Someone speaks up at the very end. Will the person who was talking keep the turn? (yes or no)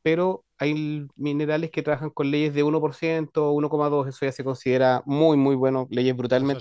no